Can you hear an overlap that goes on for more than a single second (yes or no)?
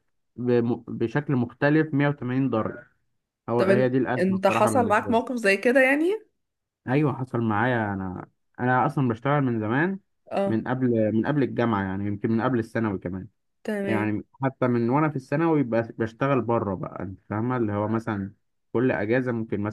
yes